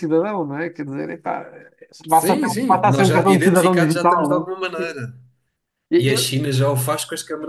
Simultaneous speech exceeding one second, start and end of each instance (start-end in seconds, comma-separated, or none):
2.1-4.8